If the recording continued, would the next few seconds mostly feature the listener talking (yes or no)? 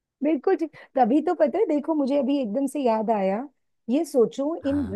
no